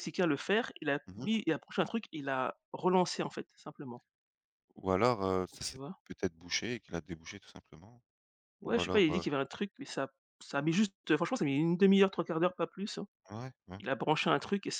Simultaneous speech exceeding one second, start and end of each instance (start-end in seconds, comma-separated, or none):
none